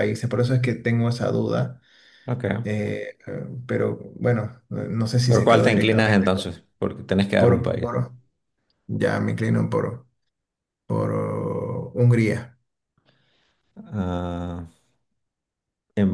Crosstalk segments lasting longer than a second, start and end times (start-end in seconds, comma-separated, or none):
5.2-6.6